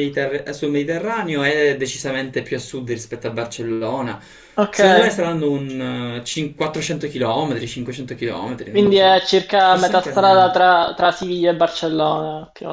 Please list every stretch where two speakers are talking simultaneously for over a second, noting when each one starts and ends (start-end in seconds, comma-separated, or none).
8.7-10.6